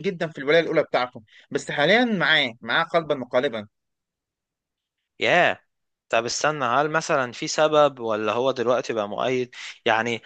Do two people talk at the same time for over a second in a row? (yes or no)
no